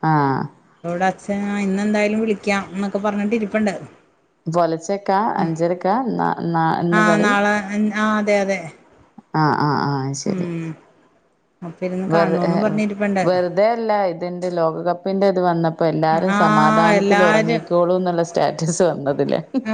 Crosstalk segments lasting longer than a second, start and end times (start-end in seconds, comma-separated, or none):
16.4-17.7